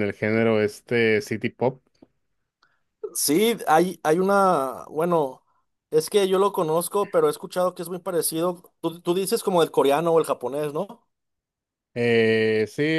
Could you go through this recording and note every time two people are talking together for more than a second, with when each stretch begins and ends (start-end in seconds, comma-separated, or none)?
none